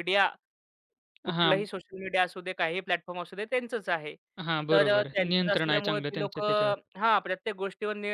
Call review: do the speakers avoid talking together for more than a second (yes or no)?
no